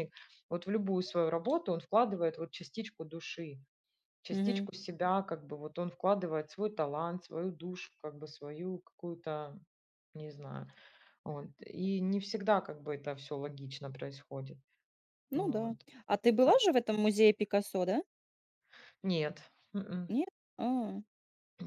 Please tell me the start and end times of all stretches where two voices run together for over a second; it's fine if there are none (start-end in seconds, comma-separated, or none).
none